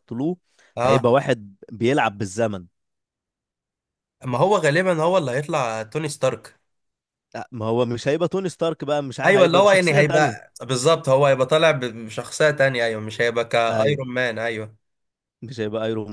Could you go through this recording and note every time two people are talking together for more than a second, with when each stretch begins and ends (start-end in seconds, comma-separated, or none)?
9.2-10.5